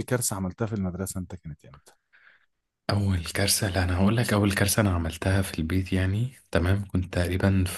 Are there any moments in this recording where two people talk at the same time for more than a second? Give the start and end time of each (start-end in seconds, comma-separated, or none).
none